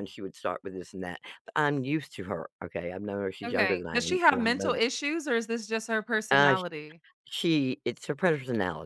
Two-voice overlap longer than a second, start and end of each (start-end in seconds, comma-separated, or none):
3.5-4.8